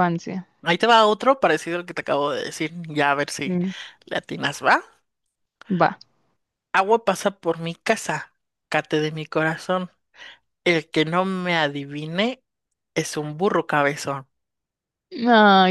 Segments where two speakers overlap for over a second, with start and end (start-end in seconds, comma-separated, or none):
none